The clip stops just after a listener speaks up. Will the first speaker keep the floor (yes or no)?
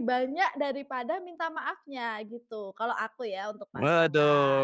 no